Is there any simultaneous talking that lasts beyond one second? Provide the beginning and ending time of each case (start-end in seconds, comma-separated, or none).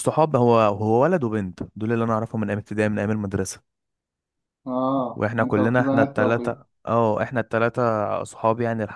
5.2-6.6